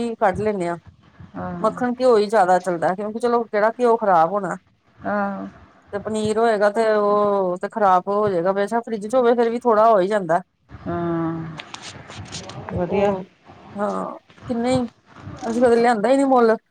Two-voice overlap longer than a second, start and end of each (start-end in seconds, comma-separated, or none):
none